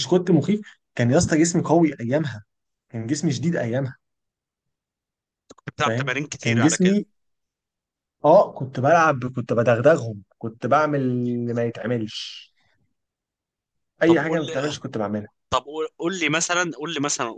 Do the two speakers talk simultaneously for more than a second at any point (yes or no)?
yes